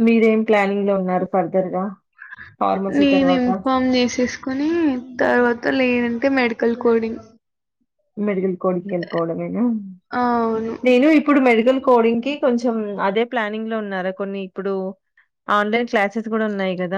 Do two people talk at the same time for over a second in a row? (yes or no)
no